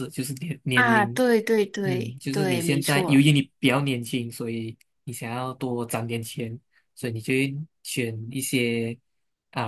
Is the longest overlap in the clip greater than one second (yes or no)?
yes